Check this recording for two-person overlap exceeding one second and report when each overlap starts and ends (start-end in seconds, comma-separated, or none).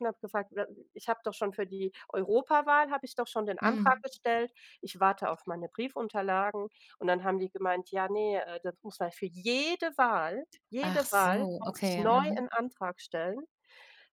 10.8-12.4